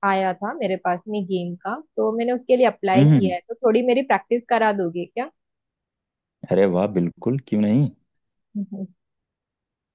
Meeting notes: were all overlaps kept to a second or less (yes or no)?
yes